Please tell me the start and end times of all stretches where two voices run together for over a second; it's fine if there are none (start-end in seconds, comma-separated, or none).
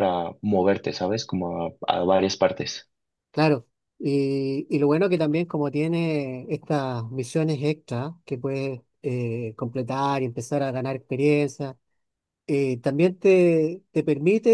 none